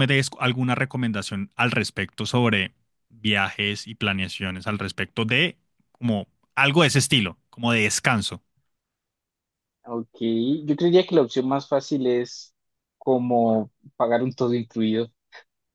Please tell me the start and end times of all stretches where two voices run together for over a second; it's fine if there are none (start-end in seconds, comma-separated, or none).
none